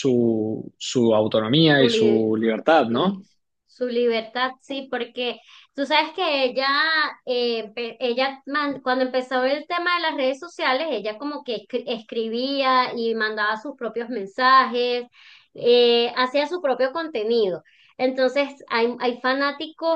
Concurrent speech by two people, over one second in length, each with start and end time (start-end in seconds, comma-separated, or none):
1.8-3.2